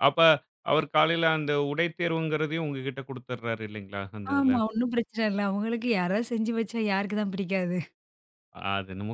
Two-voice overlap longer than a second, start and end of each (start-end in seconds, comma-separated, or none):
none